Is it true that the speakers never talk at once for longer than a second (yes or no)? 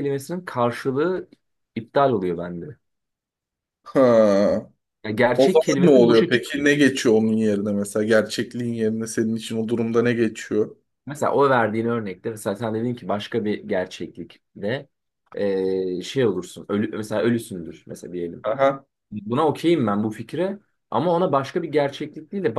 no